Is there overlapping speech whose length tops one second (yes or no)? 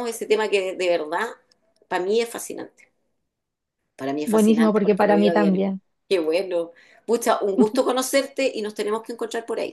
yes